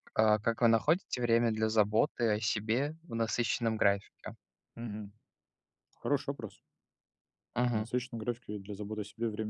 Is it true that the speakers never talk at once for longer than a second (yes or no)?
yes